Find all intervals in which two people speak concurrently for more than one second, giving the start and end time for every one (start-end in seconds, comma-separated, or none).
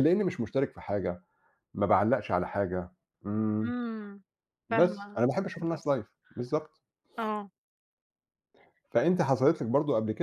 4.7-6.1